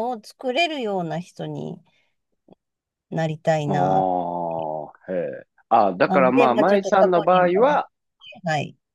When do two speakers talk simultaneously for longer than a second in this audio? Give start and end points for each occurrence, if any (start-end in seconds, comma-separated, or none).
6.0-7.8